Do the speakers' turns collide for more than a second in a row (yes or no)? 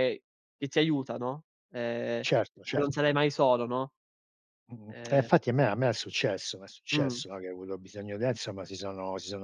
no